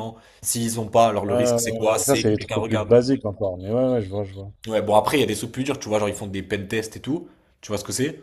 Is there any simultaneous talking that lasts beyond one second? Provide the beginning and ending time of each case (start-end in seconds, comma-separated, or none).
1.3-2.9